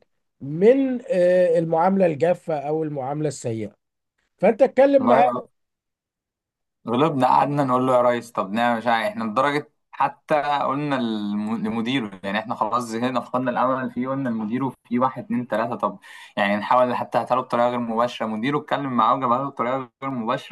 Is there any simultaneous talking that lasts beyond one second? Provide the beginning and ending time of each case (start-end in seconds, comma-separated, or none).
none